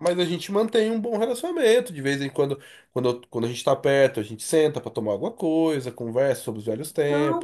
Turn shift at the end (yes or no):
yes